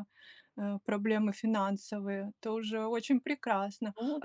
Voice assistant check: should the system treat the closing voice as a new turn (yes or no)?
no